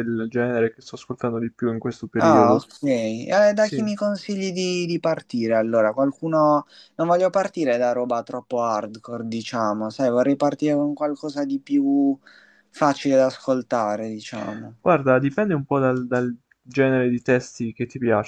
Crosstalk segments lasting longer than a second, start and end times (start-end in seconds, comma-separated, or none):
none